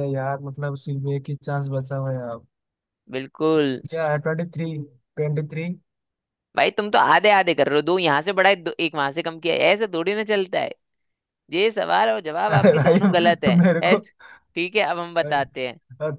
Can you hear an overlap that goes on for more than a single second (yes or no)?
yes